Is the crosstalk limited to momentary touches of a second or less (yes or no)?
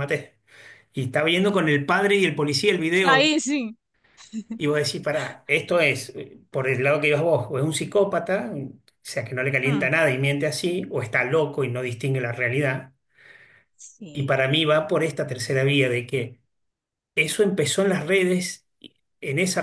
yes